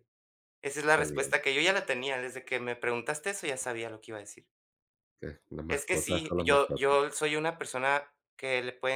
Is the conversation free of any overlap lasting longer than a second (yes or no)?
no